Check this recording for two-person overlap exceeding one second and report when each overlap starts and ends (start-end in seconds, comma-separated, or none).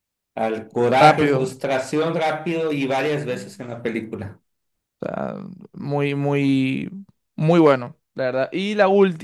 none